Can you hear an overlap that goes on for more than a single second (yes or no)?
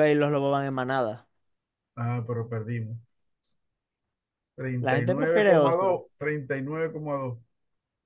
yes